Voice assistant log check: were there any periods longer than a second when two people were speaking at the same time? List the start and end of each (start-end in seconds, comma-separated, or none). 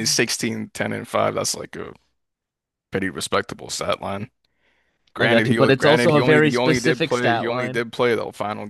5.2-7.8